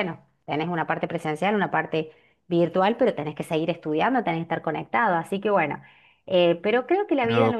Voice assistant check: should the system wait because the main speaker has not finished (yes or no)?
yes